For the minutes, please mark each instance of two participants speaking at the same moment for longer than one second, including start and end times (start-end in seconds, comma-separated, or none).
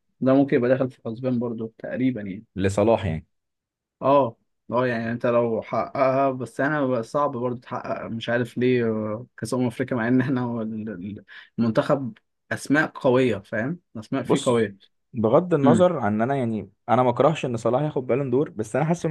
none